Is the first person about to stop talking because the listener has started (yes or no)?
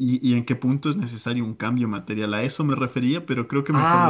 yes